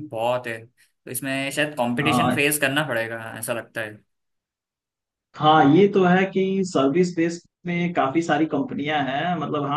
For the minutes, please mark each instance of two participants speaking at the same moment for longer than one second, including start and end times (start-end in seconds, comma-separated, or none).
none